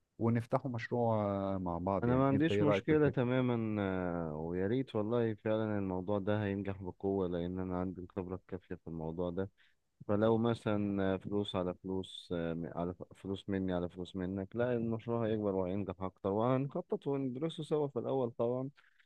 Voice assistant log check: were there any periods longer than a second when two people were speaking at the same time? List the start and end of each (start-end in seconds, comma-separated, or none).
2.0-3.3